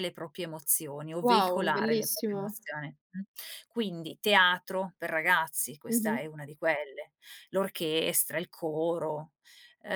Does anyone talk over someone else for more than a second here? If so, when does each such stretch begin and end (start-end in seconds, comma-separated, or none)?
1.2-2.6